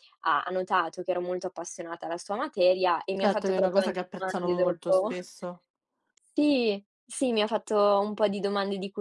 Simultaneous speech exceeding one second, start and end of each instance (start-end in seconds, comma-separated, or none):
3.1-5.1